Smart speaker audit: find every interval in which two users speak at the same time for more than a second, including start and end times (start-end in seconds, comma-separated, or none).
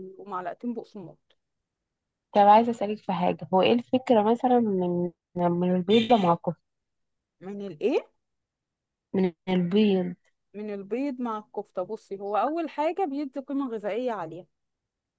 none